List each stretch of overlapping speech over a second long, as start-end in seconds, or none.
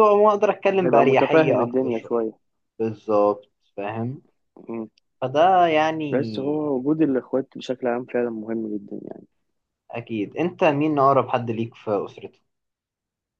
0.8-2.1